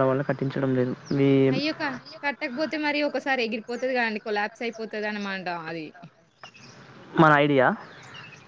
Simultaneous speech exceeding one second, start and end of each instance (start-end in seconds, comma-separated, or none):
none